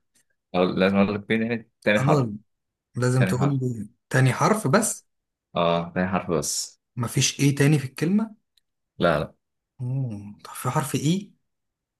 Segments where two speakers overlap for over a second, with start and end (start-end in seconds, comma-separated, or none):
none